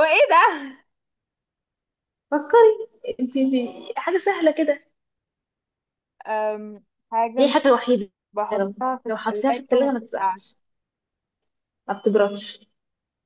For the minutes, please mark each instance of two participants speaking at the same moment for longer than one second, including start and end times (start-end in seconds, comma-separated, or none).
8.6-10.4